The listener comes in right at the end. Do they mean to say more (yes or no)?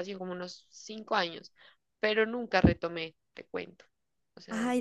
yes